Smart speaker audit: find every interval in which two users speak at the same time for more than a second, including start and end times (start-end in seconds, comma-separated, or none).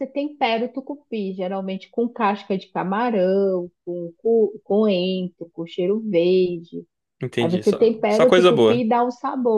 7.4-8.8